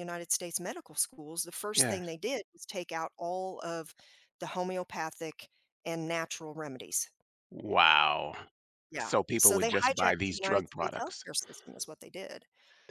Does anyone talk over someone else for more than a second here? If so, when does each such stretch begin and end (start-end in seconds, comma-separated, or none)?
9.0-11.2